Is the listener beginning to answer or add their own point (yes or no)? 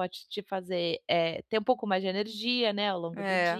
yes